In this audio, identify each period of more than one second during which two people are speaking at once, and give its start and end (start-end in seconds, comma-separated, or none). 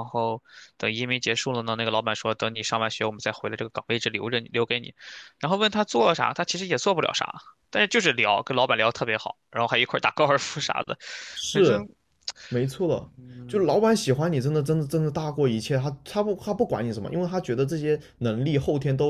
none